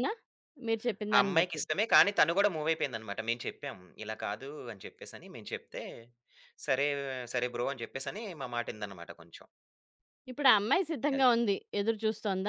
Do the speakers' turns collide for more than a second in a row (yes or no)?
no